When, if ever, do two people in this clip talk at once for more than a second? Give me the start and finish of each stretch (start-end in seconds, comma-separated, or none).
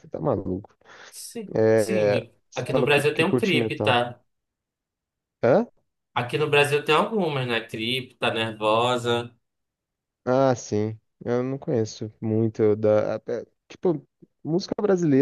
1.6-4.0